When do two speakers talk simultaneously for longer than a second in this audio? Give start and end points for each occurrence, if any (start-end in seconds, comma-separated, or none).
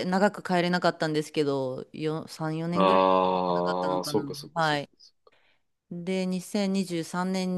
2.7-4.9